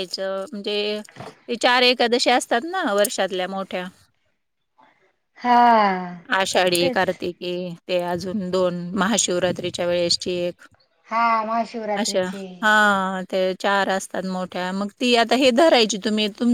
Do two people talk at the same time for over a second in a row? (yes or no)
no